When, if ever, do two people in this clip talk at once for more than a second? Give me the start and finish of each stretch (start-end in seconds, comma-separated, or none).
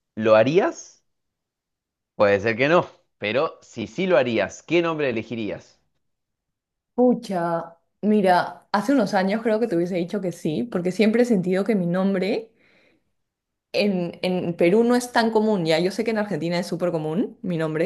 none